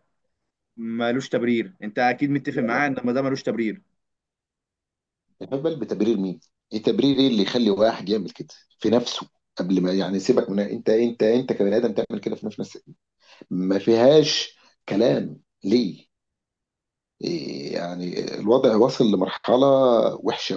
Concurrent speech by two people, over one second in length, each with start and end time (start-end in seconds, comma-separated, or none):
none